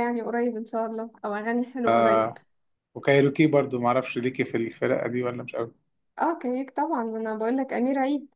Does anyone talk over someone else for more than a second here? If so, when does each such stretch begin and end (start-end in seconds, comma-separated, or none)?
none